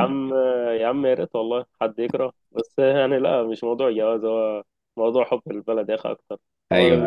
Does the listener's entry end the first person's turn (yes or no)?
yes